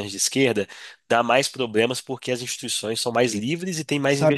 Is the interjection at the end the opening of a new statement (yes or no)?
yes